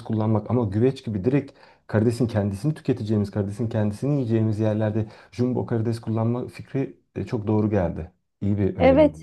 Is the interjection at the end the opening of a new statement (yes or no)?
yes